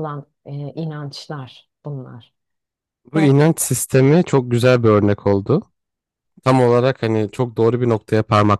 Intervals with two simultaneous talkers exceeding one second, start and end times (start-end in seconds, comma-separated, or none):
none